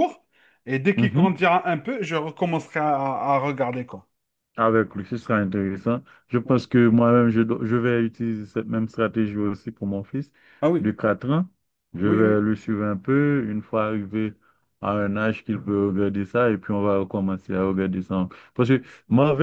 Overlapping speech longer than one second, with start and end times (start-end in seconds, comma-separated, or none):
none